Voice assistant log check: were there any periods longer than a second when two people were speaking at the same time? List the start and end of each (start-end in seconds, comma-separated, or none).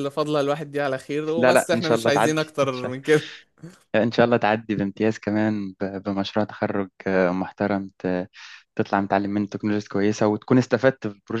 1.4-2.9